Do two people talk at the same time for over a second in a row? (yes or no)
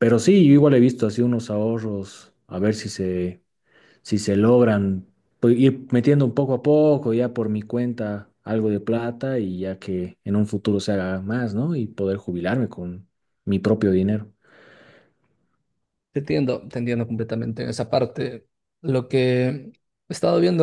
no